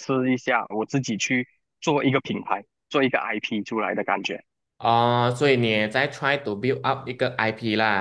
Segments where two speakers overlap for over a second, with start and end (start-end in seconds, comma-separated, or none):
none